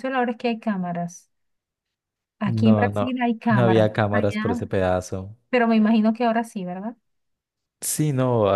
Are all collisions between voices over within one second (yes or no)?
no